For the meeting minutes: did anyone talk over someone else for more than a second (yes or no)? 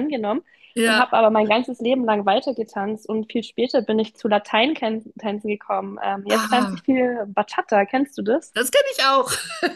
no